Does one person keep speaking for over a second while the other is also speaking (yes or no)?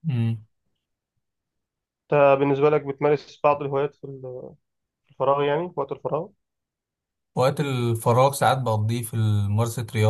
no